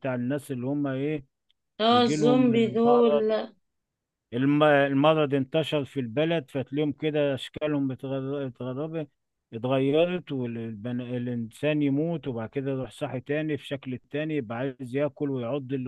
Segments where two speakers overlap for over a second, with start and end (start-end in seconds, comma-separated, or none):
1.9-3.3